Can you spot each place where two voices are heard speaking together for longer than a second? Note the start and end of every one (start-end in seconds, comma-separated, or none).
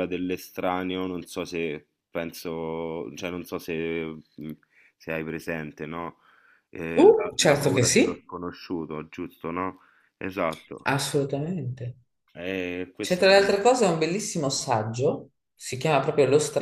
7.0-8.3